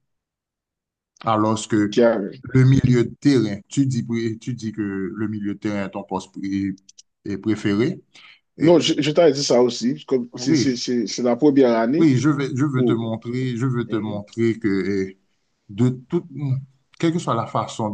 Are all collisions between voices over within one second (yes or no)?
yes